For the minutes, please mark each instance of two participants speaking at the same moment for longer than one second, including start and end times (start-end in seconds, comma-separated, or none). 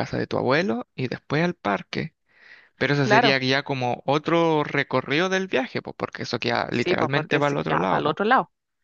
6.7-8.2